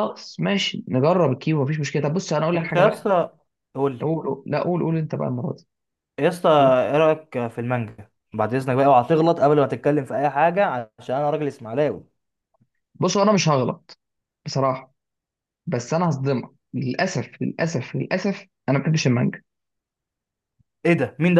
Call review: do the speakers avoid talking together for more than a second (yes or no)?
yes